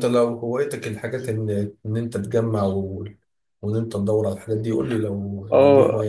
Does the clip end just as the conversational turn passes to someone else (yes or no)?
yes